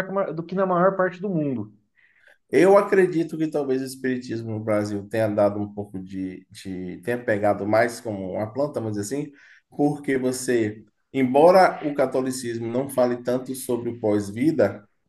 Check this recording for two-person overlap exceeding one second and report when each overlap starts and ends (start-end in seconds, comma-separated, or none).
none